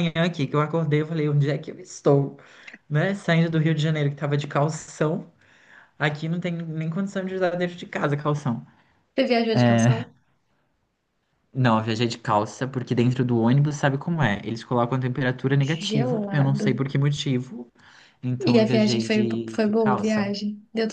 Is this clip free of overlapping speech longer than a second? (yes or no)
no